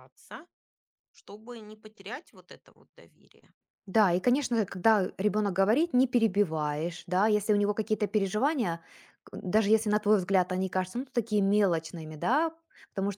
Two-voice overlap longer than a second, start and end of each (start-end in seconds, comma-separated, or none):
none